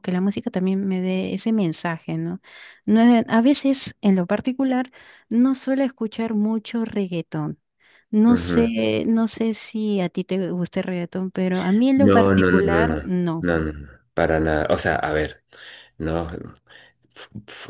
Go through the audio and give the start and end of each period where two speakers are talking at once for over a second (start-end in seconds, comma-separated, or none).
11.9-13.5